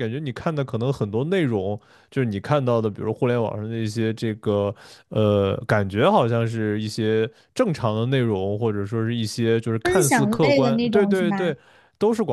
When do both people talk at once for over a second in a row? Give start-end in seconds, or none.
9.8-11.5